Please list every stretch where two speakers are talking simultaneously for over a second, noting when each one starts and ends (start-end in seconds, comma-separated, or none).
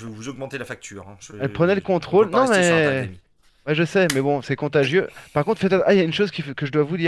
1.4-3.1